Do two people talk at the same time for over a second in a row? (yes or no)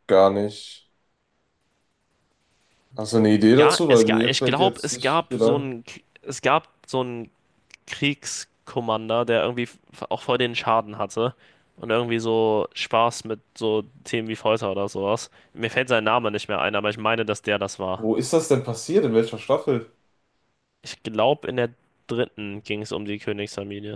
yes